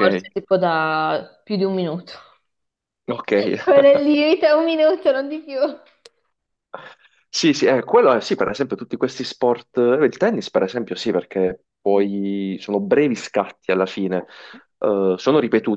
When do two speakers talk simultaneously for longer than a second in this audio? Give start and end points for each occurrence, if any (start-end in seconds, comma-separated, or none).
none